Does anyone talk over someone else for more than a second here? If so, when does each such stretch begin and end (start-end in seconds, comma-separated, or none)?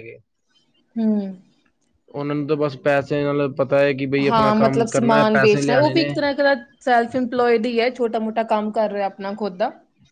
4.3-6.1